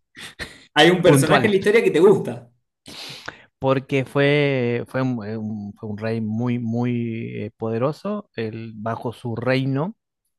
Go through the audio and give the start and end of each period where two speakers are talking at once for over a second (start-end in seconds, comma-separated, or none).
none